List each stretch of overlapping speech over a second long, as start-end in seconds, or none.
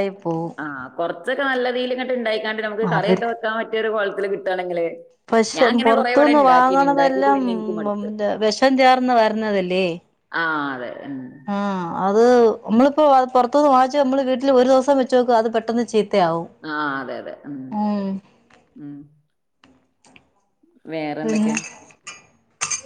5.6-7.4